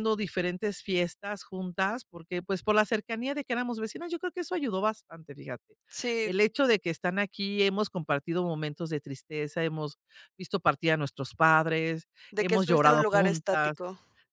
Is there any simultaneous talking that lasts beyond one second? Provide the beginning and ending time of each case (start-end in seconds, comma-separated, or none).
12.3-13.8